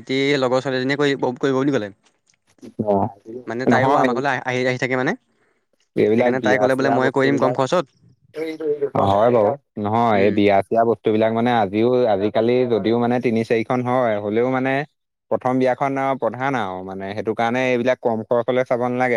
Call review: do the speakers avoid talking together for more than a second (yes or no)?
no